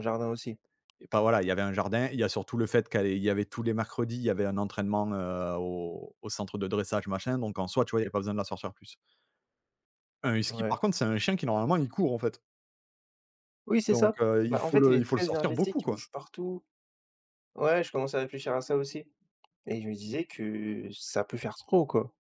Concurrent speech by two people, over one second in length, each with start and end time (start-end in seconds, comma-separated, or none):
13.9-16.0